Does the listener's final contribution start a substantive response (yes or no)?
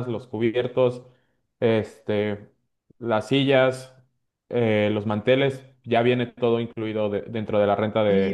yes